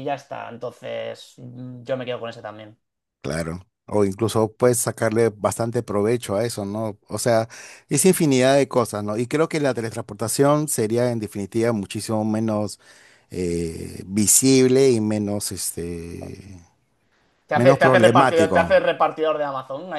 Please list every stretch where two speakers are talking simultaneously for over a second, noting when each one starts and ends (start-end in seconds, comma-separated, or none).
17.5-18.9